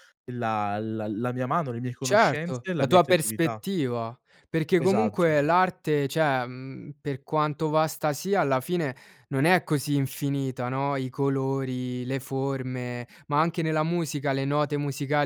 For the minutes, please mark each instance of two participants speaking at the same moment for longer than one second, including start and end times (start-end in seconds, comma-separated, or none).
2.0-3.6